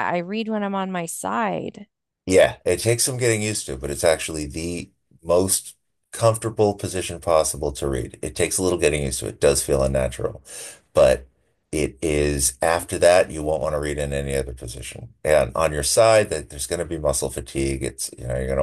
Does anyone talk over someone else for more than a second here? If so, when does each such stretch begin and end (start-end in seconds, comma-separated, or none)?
none